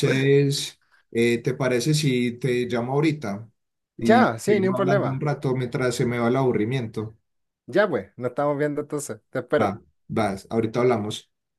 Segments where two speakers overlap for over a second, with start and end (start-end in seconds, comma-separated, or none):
4.0-5.2